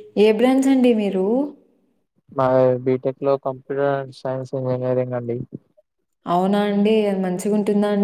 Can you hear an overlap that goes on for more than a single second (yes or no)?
no